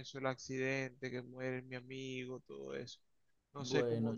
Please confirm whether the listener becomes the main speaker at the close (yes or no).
yes